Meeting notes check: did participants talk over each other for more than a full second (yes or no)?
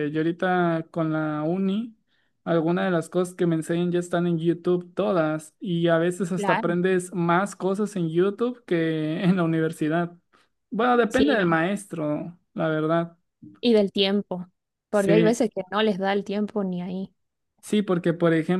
no